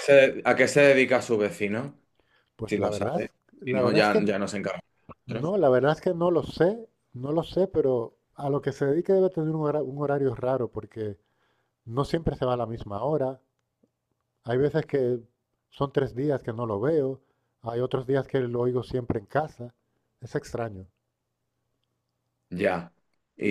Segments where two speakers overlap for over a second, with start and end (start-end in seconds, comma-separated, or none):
2.6-4.2